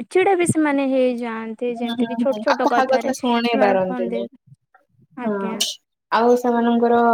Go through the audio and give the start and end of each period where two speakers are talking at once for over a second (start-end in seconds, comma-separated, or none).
1.7-4.2